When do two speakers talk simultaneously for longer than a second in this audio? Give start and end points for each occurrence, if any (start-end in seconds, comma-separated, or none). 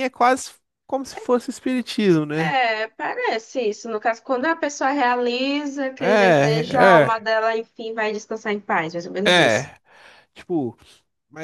6.0-7.2